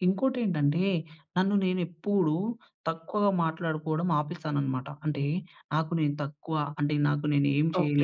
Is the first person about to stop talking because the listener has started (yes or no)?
yes